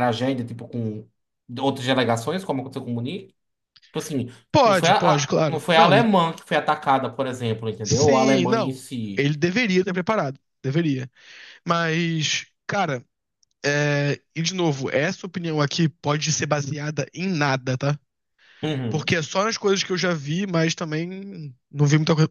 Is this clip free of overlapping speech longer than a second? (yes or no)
no